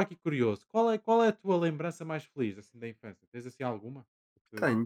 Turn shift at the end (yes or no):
yes